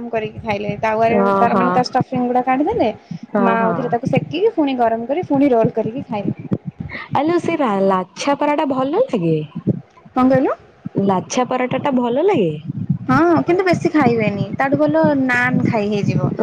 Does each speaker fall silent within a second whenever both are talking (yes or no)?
yes